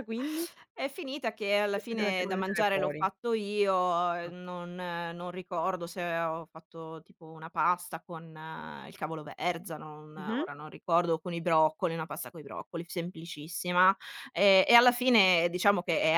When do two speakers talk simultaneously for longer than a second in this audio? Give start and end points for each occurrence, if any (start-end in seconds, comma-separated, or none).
1.7-3.0